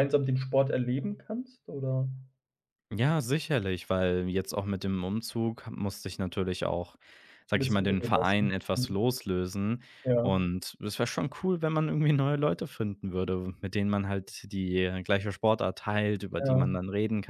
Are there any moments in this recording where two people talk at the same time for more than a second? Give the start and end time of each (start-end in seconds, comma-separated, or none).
7.5-9.0